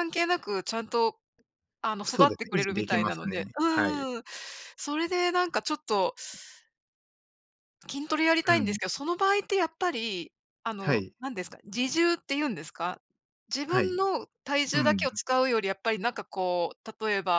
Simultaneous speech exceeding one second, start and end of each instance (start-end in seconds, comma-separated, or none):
2.1-4.1